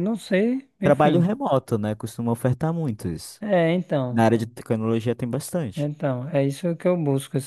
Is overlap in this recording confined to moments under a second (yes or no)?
yes